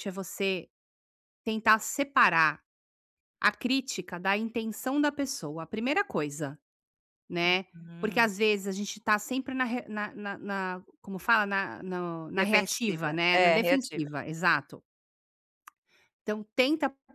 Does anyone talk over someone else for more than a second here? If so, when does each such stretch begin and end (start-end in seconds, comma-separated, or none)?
12.4-14.1